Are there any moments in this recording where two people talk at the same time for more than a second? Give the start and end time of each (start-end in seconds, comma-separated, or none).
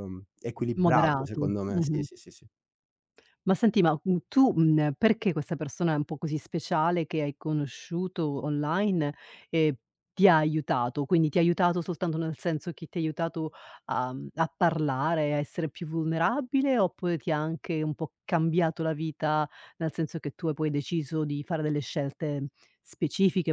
0.8-2.0